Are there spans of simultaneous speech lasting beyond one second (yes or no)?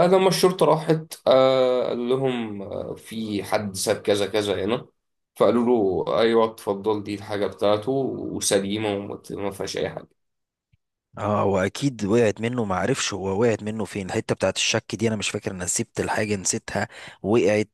no